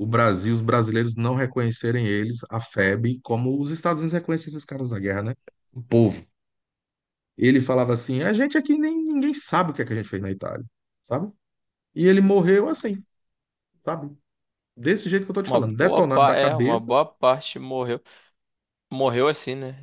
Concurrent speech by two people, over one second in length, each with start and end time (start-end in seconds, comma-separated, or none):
15.5-16.9